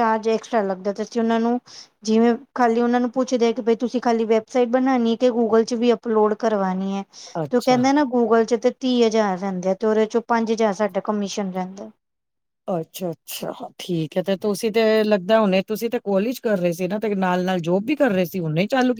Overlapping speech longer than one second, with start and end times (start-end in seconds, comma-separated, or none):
none